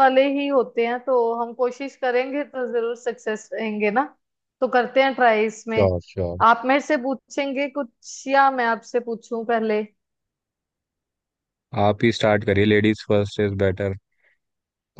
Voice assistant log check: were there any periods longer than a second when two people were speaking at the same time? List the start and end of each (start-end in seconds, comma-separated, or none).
none